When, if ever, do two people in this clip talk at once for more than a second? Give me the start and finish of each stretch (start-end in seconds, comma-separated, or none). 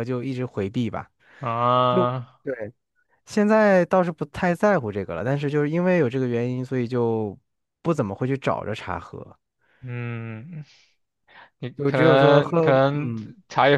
11.8-13.1